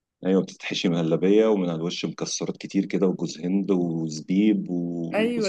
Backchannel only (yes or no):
no